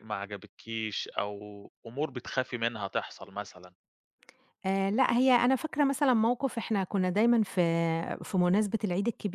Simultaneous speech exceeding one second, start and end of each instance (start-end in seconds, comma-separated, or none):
none